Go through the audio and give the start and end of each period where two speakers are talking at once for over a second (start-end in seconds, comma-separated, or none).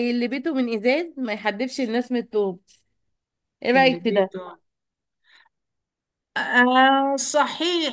none